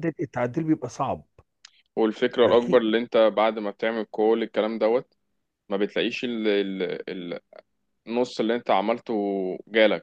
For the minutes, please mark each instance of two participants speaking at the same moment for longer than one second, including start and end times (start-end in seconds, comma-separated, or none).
none